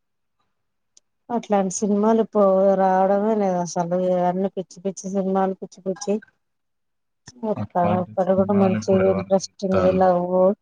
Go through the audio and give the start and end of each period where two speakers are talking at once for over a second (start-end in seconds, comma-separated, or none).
7.6-10.0